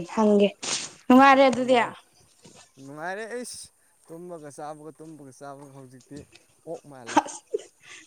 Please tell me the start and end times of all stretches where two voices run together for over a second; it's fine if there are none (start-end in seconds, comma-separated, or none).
none